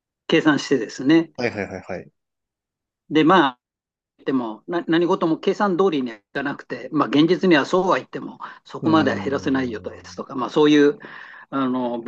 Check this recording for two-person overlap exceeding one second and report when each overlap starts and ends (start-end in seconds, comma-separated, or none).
8.8-10.2